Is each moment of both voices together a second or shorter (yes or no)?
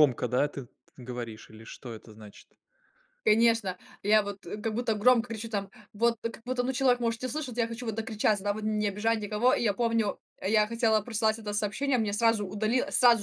yes